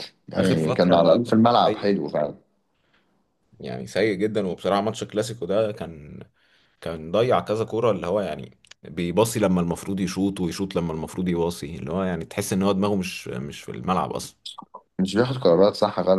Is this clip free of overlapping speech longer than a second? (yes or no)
no